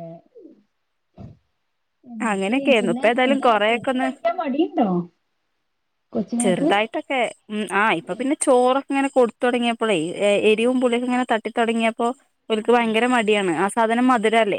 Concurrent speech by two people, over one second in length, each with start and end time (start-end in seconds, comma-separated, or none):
2.3-4.1